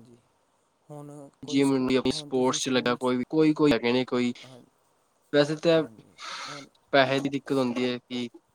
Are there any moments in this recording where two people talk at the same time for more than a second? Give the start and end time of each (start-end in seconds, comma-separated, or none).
1.5-3.0